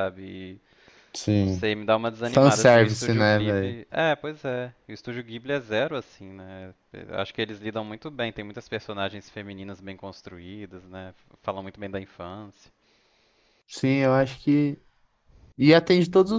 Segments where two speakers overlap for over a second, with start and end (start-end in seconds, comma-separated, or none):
2.2-3.8